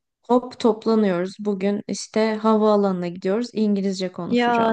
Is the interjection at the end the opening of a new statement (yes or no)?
yes